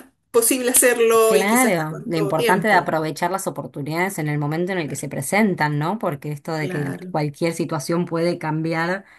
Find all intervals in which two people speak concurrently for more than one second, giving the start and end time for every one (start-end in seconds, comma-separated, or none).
1.2-3.0